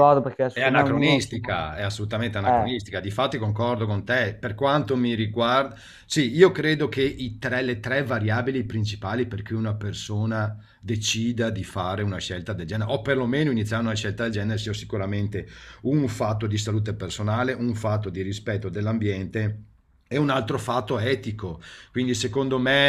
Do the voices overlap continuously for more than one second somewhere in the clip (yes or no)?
yes